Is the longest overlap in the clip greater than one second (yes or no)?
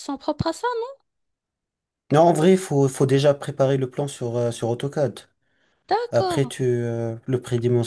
no